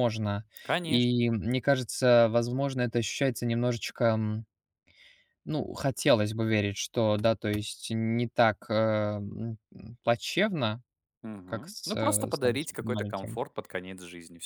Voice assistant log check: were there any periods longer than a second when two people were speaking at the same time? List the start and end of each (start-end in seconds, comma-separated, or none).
11.4-13.4